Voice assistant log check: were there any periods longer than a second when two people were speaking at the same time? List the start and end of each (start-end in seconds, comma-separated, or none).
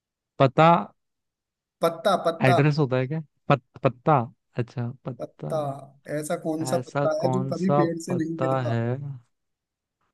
6.7-8.8